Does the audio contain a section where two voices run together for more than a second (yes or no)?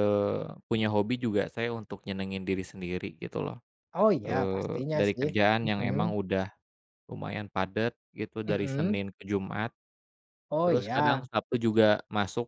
yes